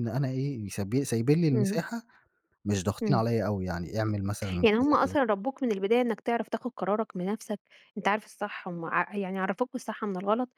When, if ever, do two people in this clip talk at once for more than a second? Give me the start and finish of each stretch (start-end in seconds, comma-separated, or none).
none